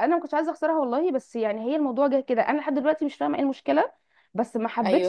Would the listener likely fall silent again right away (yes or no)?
yes